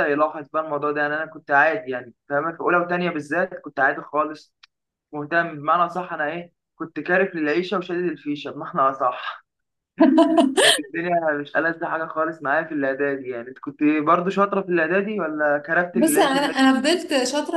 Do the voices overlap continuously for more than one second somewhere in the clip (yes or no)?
no